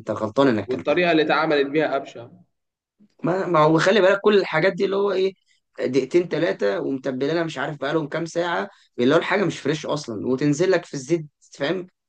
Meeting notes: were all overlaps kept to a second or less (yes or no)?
yes